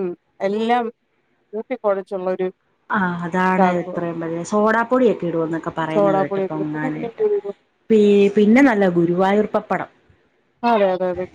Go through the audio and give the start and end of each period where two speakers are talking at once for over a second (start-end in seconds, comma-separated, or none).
5.9-7.2